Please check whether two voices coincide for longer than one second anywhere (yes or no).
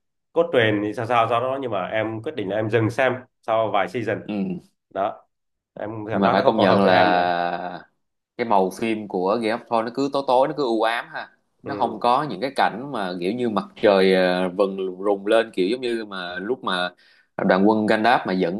yes